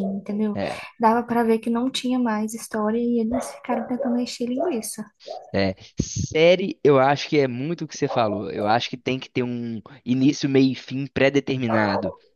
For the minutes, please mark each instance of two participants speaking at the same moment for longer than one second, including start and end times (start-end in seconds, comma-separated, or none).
none